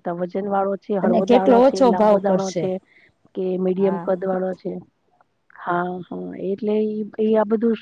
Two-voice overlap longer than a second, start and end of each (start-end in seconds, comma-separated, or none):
1.1-2.6